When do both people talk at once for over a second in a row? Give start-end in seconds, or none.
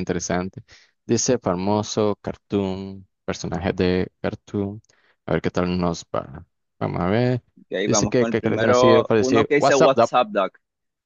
7.8-10.1